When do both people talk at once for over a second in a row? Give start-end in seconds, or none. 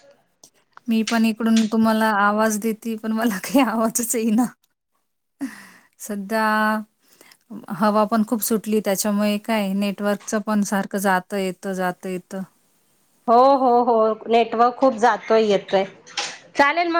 none